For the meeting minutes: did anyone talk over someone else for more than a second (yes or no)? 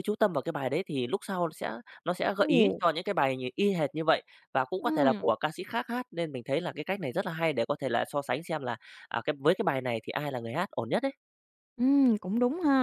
no